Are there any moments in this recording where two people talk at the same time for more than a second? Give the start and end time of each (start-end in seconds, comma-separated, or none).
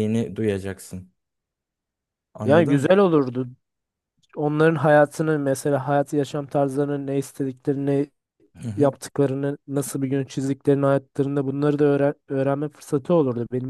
none